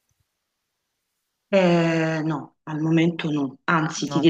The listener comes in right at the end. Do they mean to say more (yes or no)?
no